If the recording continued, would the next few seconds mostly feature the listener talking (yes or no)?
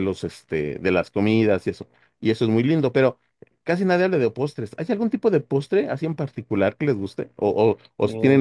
no